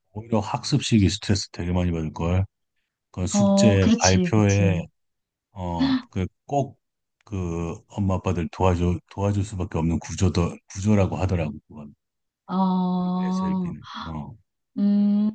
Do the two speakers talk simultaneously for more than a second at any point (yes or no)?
yes